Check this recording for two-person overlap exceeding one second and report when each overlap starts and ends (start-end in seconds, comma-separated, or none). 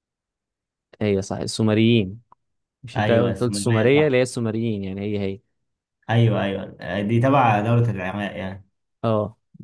3.0-4.2